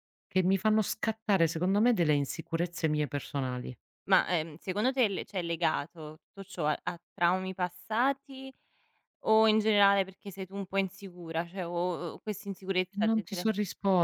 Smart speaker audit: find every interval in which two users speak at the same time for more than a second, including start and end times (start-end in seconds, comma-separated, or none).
none